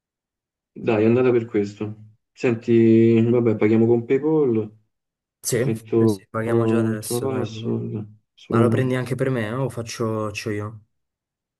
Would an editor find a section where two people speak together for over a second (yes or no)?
yes